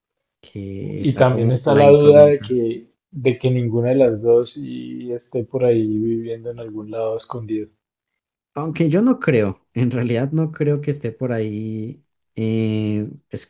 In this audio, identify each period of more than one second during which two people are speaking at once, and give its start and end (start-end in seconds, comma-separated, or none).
0.9-2.6